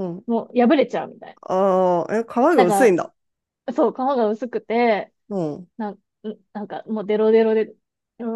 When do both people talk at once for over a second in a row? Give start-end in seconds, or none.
none